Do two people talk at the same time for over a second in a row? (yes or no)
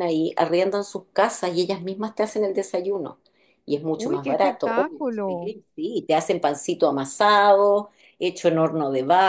yes